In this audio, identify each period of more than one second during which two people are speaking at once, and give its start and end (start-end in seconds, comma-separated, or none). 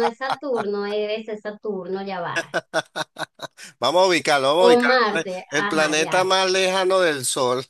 4.6-6.2